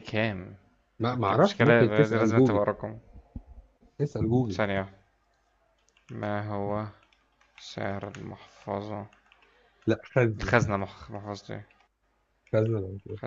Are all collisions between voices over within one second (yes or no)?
no